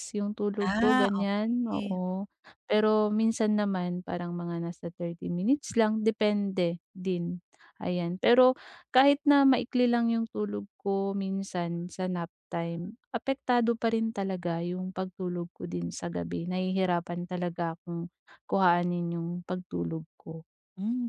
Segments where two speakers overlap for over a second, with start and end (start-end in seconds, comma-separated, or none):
0.6-2.0